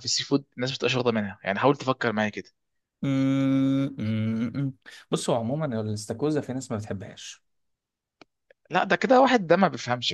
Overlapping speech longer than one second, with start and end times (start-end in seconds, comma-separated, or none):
none